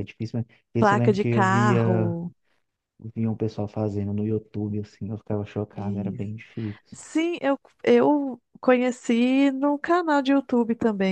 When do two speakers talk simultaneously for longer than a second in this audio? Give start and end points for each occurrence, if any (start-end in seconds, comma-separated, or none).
0.8-2.2